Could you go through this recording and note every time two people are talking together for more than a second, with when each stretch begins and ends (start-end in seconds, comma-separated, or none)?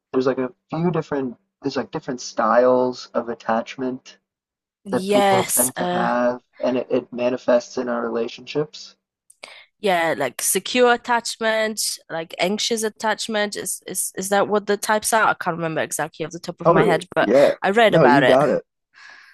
4.9-6.1, 16.6-18.4